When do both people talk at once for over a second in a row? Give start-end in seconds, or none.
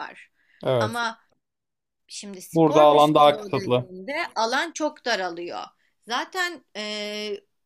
2.5-3.9